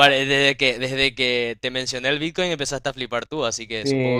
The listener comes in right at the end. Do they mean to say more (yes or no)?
yes